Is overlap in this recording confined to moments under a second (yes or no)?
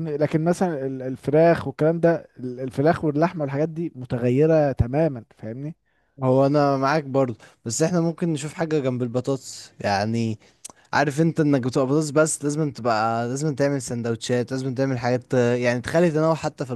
yes